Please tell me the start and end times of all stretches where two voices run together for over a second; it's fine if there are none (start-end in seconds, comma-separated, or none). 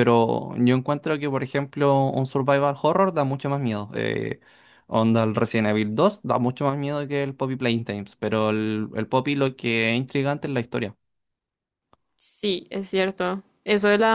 none